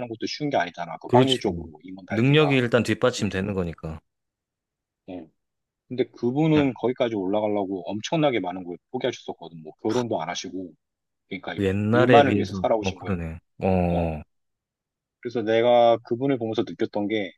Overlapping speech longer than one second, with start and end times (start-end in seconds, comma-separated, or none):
11.6-13.2